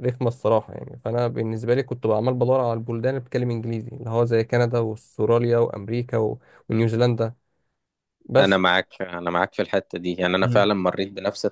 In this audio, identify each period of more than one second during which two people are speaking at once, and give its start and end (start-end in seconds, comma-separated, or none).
none